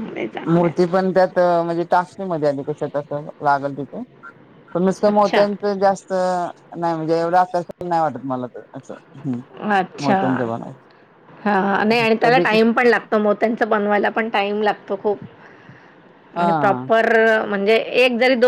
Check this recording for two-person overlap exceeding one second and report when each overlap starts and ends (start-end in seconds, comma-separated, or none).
none